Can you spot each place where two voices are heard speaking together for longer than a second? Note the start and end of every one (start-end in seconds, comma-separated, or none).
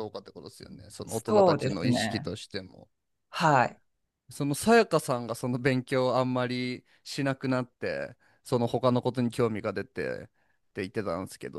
1.1-2.3